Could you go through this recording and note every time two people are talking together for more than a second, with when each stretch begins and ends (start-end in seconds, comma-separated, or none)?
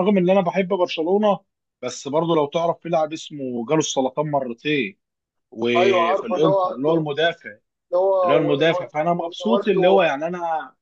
5.8-7.1, 8.2-10.1